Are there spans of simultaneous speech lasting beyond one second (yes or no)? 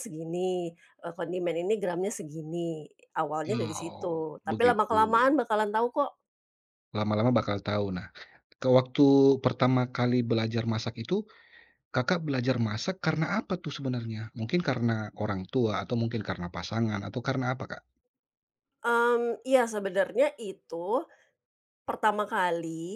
yes